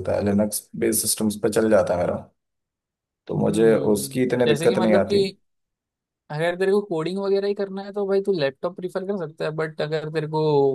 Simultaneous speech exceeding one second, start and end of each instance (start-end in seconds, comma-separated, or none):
3.3-5.2